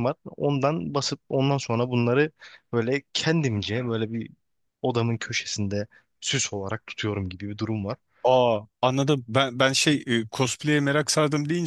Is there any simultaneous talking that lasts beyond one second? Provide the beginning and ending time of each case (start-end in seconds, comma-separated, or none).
none